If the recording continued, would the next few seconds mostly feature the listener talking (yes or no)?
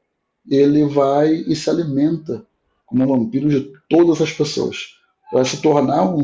no